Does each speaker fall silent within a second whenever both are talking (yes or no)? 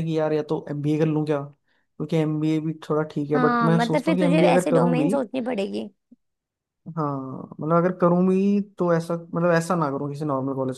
no